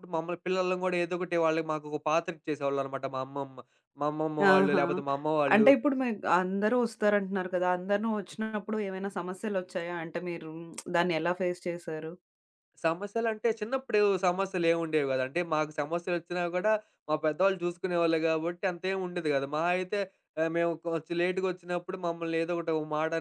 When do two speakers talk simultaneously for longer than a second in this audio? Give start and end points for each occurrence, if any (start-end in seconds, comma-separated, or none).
none